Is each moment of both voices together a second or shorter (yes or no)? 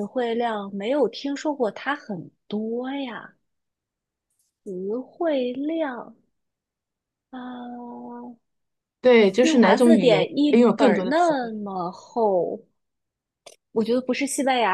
no